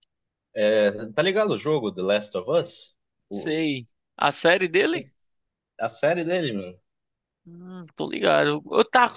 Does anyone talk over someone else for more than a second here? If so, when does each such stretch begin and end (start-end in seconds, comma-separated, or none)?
none